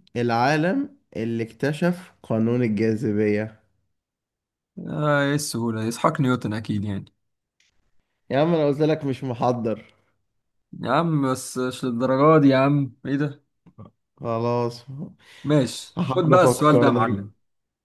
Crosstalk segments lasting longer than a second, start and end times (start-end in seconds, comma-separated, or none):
16.0-17.2